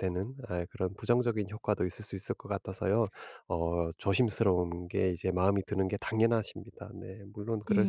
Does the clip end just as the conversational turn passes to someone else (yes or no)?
yes